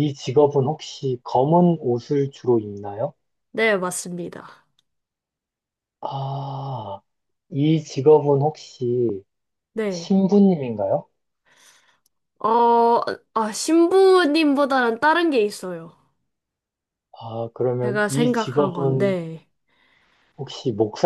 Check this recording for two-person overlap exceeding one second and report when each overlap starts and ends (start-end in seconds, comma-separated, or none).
17.8-19.2